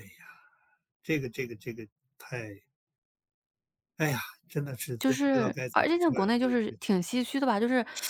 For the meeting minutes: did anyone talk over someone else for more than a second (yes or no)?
yes